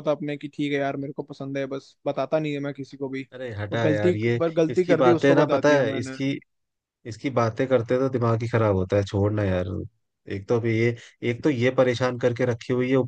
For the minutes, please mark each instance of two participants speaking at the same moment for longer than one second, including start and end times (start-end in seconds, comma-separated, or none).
3.7-6.2